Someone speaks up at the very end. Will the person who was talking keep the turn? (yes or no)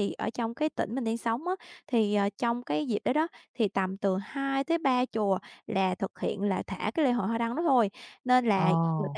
yes